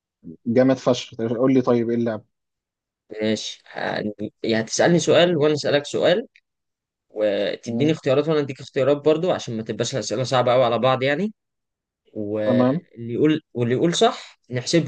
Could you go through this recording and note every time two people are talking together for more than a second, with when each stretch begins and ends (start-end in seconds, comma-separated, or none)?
none